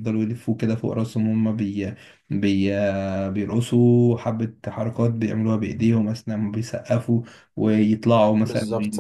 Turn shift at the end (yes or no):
no